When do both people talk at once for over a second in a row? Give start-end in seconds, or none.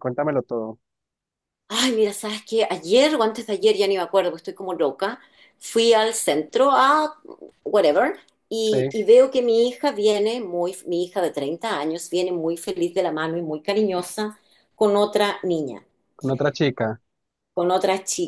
none